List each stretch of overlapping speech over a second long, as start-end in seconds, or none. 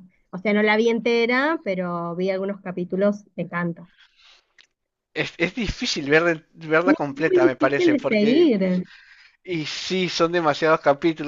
6.8-8.5